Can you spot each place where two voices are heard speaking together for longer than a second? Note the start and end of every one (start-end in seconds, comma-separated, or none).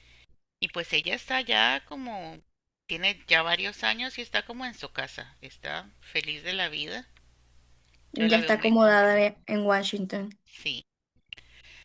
8.2-9.4